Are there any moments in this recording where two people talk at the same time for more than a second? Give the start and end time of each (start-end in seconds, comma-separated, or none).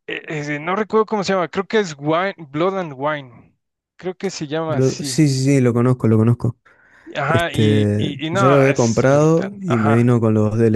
7.3-10.1